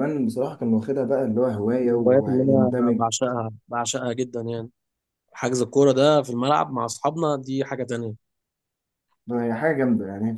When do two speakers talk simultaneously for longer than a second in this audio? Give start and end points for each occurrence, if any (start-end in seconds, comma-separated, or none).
1.7-3.0